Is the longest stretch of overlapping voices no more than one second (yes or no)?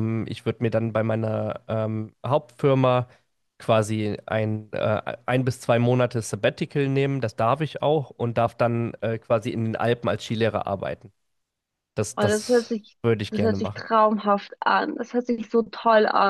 no